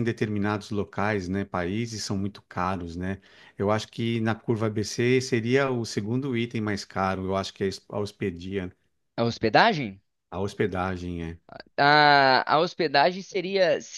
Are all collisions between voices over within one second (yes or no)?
yes